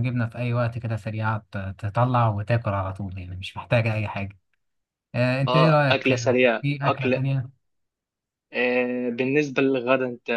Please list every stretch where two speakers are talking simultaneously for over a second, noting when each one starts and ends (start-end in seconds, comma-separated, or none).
5.5-7.2